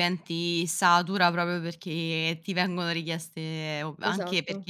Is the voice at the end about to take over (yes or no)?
no